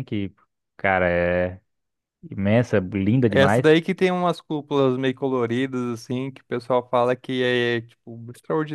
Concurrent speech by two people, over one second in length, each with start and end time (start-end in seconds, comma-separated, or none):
none